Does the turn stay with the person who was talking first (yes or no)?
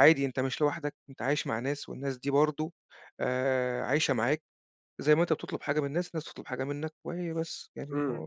no